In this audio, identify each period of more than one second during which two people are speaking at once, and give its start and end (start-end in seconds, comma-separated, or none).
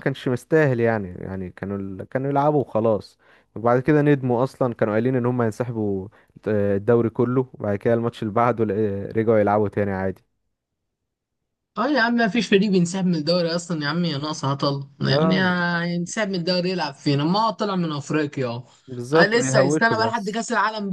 19.1-20.4